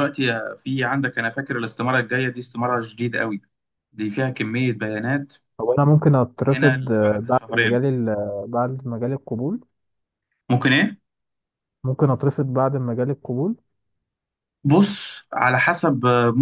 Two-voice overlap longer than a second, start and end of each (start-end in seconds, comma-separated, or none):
6.4-7.8